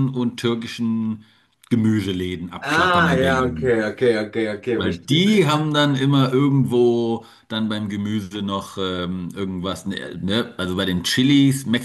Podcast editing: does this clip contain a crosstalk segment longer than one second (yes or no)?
yes